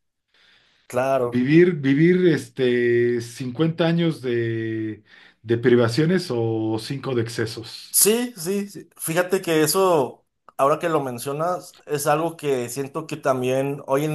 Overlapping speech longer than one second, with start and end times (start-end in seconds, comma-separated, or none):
none